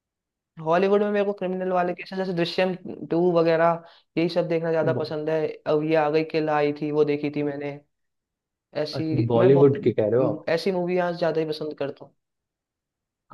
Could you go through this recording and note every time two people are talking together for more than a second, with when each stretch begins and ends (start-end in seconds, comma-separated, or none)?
8.9-10.5